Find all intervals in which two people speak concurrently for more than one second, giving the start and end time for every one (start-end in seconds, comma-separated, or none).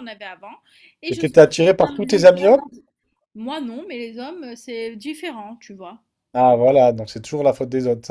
1.1-2.6